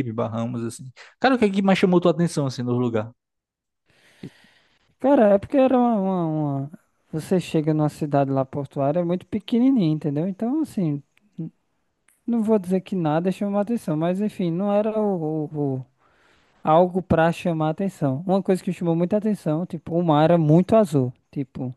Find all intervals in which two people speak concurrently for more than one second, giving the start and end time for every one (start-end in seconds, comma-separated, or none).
none